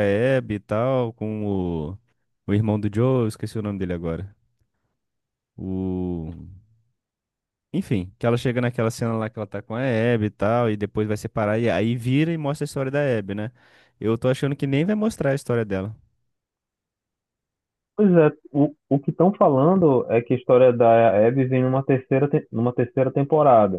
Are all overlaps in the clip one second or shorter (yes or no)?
yes